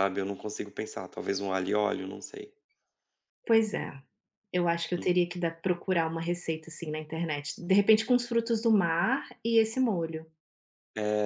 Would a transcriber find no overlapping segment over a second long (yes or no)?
yes